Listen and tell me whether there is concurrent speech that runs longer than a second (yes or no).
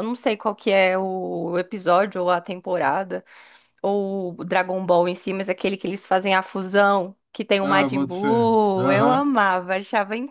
yes